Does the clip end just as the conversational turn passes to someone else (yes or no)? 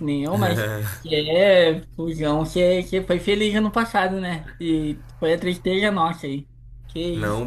yes